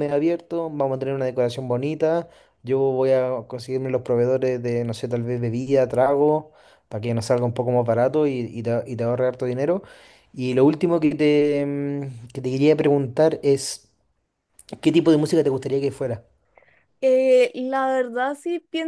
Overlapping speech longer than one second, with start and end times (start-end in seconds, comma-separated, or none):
none